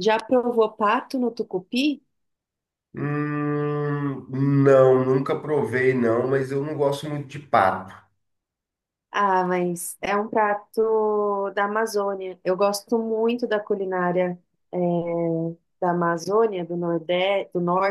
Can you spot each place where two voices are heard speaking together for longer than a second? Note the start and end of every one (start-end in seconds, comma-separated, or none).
none